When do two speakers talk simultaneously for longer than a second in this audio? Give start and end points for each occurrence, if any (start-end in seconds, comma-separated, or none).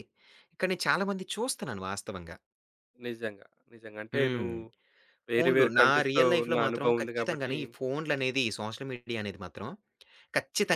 5.3-7.5